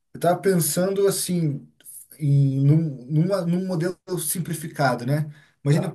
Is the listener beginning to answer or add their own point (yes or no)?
no